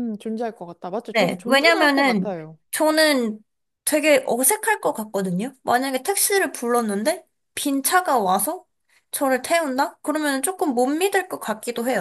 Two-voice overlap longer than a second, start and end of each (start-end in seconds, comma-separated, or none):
1.1-2.3